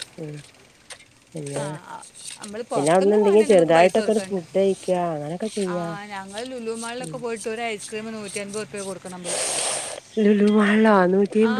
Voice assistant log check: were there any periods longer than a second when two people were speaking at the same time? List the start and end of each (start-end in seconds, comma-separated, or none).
2.8-4.4